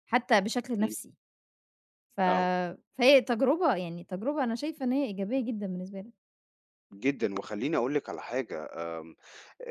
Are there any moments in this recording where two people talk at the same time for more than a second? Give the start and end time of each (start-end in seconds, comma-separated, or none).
none